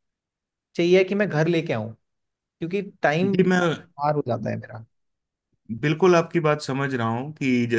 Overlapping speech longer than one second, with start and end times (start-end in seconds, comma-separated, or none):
none